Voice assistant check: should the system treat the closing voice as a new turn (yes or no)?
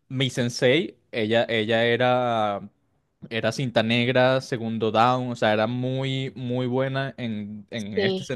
no